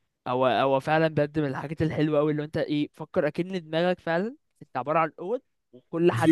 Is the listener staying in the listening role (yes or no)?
yes